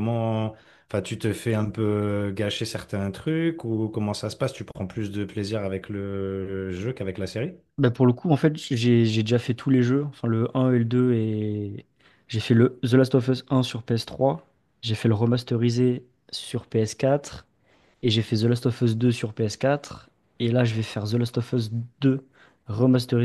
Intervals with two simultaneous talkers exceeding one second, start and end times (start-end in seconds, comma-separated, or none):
none